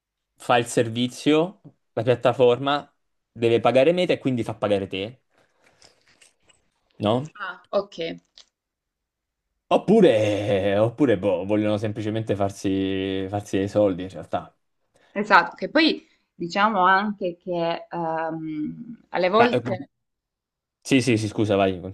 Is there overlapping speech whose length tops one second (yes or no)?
no